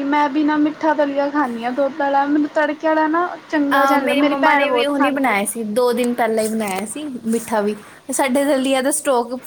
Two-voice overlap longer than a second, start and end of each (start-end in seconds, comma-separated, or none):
3.8-5.3